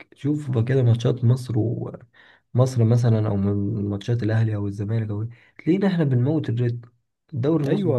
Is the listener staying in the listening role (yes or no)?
no